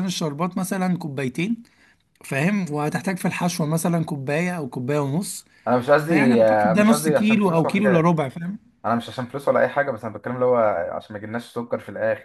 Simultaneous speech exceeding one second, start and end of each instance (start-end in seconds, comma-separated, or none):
6.0-8.1